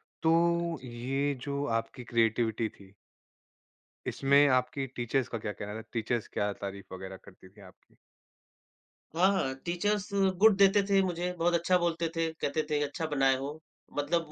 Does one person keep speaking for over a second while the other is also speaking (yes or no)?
no